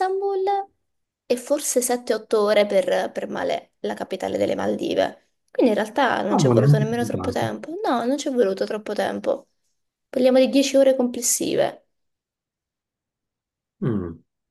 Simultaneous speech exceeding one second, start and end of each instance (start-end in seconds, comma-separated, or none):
6.3-7.5